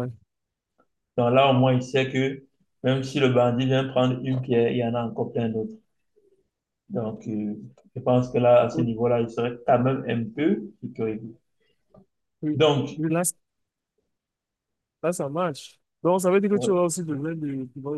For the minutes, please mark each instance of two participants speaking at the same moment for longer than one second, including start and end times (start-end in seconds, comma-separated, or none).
none